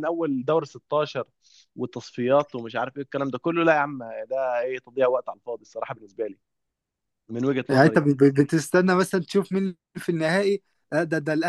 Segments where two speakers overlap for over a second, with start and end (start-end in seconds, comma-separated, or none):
none